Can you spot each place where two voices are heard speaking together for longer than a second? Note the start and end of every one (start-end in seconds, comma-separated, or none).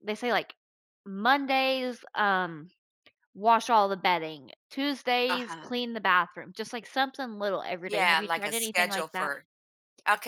7.8-9.3